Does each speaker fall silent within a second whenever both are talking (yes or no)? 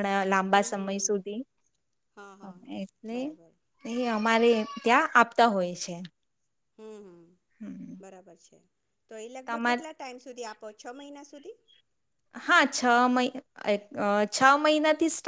yes